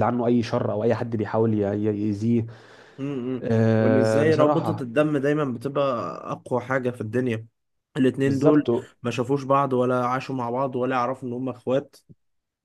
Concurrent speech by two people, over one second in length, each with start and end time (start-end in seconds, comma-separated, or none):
3.4-4.8